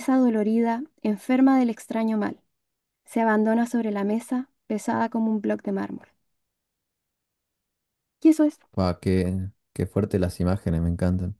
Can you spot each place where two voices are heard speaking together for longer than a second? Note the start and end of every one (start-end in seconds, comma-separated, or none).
none